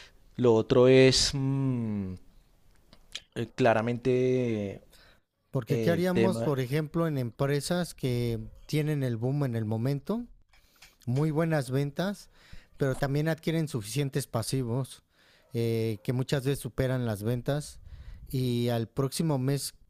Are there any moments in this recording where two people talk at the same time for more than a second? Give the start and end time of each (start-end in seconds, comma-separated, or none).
none